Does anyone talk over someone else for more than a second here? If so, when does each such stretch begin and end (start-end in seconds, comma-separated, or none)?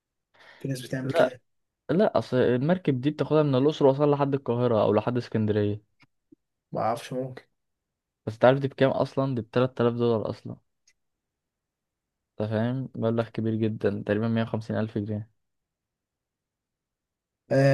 none